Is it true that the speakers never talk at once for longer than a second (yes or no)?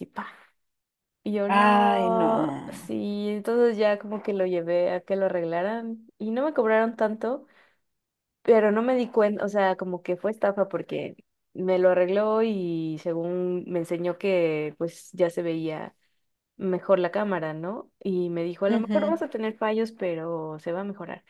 no